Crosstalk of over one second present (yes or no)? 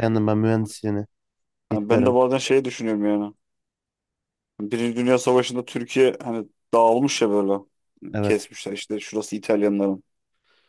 no